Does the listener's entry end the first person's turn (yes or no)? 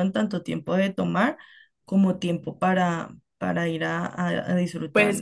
yes